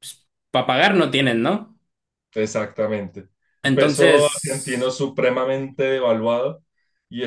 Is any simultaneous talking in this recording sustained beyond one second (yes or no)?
yes